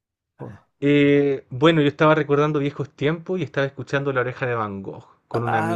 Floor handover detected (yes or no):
yes